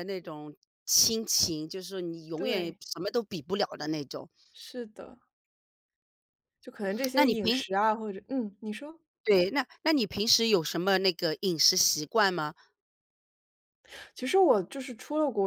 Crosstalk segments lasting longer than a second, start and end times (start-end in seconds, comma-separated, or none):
none